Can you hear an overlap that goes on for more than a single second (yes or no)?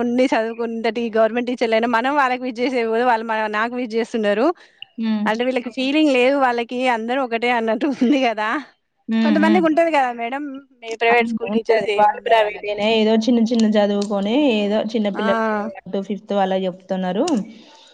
yes